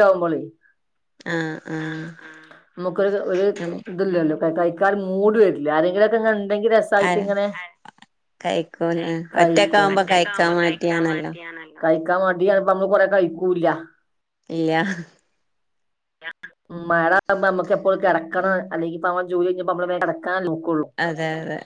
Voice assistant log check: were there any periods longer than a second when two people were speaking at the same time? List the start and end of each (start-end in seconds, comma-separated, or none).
9.4-11.3